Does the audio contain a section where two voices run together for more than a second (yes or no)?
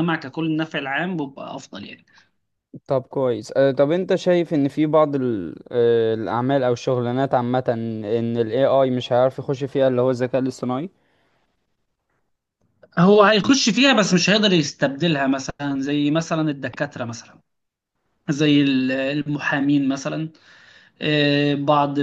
no